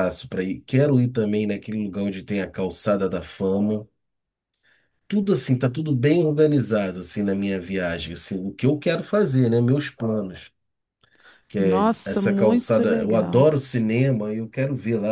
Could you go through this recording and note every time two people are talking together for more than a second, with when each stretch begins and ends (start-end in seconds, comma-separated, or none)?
11.6-13.5